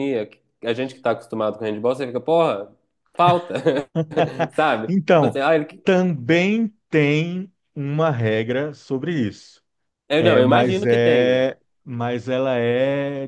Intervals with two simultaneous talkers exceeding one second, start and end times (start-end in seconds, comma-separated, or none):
10.2-11.4